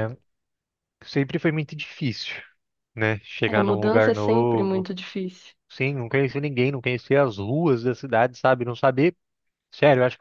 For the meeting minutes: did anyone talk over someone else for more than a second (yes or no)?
yes